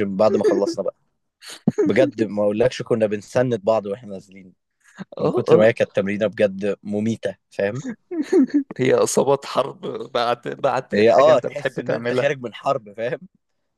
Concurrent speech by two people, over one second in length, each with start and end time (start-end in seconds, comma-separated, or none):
10.9-12.3